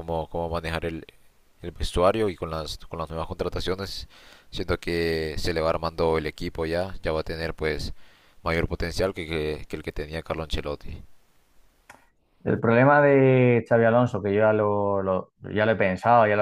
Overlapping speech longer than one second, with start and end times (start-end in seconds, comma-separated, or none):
none